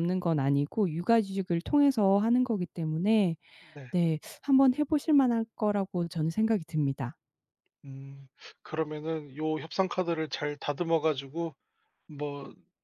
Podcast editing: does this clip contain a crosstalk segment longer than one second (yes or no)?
no